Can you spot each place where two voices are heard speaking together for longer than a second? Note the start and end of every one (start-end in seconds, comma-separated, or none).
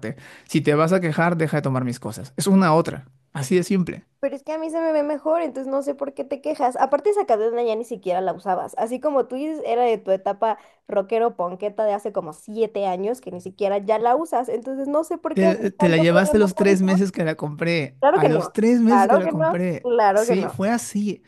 15.3-17.0, 18.0-20.6